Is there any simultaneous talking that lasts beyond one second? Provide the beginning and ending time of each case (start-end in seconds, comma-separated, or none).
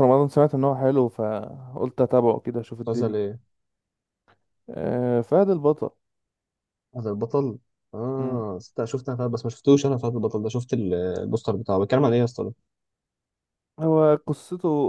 none